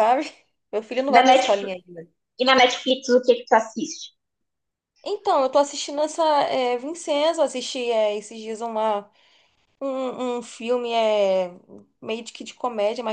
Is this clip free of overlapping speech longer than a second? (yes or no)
yes